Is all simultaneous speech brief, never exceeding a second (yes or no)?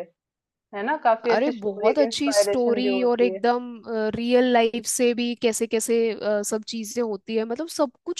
no